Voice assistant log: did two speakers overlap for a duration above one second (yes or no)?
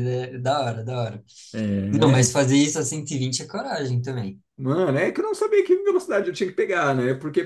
no